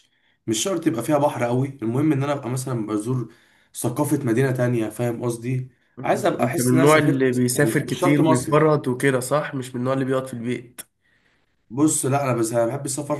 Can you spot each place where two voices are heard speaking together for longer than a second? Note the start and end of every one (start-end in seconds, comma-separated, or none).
6.0-8.7